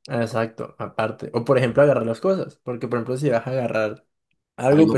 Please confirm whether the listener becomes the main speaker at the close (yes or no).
no